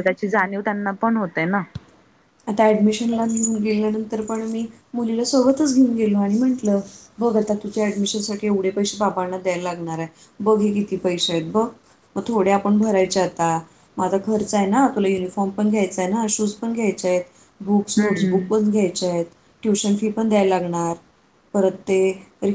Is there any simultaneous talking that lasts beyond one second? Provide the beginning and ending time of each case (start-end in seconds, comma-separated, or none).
none